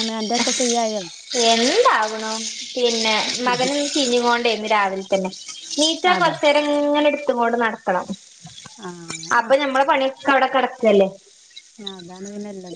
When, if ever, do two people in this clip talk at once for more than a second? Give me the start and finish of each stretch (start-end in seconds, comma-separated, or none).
none